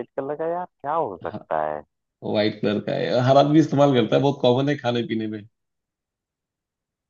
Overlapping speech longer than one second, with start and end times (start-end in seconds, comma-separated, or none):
none